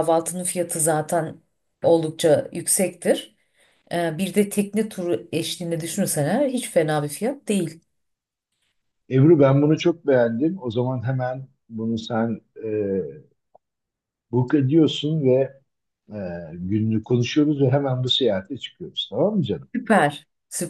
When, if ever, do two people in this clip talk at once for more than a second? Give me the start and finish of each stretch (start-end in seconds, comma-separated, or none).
none